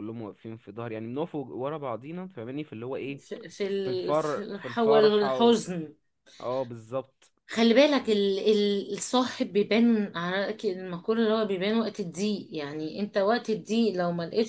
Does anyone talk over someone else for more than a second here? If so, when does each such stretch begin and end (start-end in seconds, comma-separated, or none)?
3.8-5.5